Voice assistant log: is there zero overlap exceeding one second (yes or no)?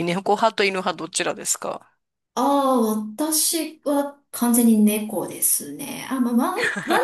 yes